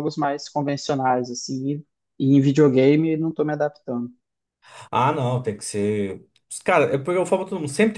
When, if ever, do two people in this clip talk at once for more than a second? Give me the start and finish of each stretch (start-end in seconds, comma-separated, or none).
none